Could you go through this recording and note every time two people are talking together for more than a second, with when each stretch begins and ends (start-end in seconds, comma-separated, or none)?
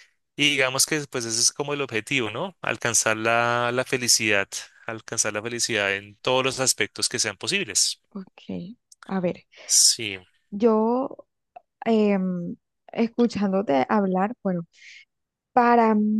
none